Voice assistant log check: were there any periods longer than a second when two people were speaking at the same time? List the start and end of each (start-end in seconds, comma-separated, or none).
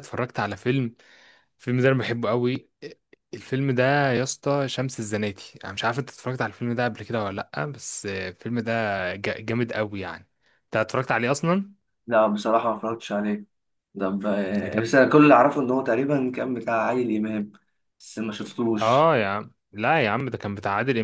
none